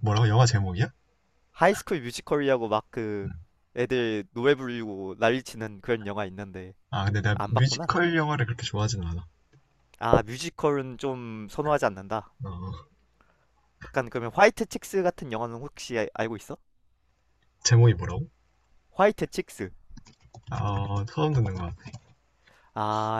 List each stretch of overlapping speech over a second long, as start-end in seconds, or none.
none